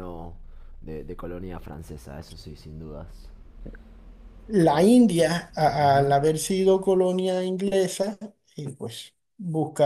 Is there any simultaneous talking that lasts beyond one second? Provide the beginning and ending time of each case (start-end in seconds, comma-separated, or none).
none